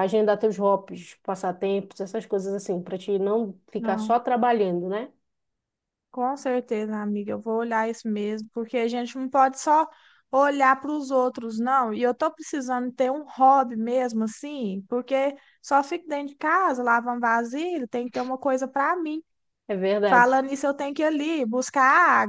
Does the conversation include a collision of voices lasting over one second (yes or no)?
no